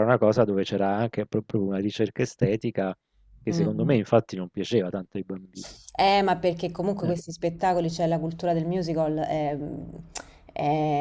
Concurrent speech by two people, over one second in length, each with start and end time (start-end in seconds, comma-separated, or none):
none